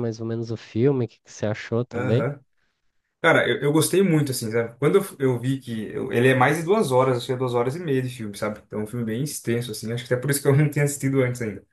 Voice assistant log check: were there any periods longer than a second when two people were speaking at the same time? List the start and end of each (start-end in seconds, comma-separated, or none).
none